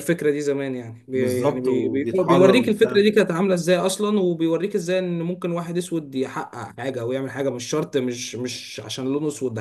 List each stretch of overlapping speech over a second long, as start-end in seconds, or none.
1.1-3.0